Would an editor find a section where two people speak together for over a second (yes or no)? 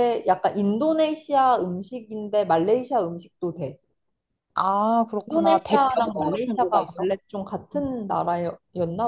yes